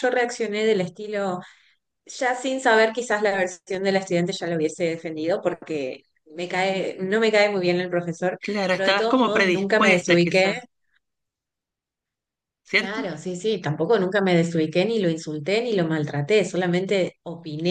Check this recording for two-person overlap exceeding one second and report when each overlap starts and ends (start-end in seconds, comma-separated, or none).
8.4-10.5